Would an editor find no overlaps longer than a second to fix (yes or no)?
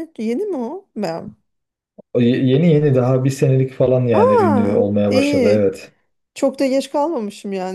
no